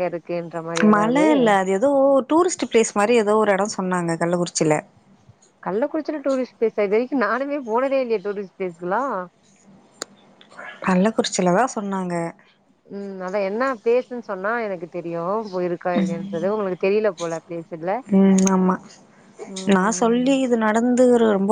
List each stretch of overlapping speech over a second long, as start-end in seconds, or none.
none